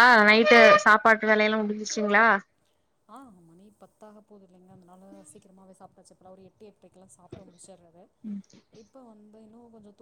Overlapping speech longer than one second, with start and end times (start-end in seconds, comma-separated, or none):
none